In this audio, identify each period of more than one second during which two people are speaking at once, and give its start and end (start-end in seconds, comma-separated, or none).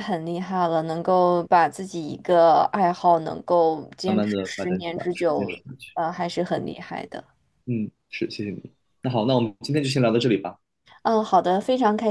4.1-5.6